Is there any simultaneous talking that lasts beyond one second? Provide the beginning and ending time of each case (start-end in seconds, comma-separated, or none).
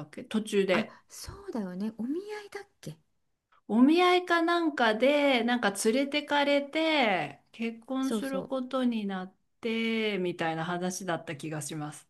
none